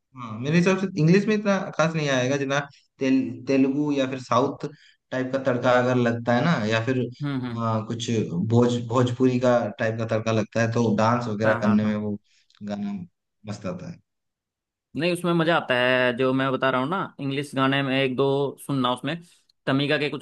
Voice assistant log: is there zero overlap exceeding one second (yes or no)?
yes